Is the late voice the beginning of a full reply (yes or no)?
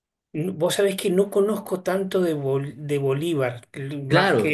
yes